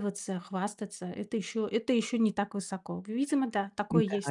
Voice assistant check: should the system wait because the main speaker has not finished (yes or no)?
no